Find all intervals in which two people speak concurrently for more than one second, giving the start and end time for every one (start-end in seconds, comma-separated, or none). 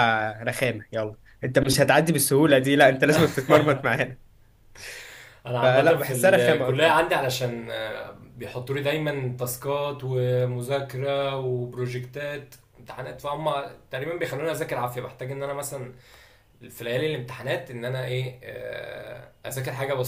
5.6-7.0